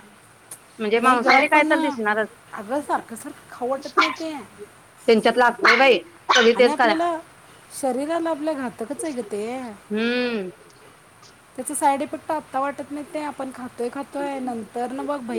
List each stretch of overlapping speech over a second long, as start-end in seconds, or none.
1.0-2.3